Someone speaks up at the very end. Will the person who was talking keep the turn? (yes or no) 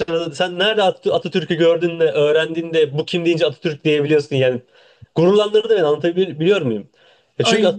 yes